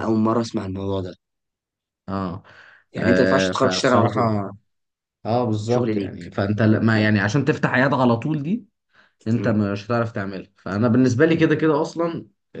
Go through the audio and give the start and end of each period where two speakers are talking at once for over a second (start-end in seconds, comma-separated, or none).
3.0-4.2